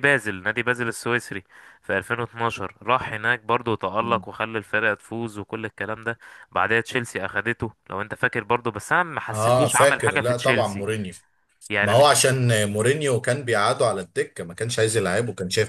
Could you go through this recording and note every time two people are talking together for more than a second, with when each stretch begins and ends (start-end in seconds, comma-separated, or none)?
9.3-10.9